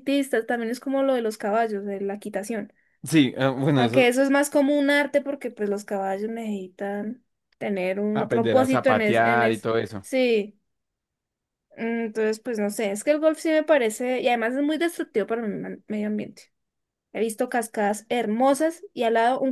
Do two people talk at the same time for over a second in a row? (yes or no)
yes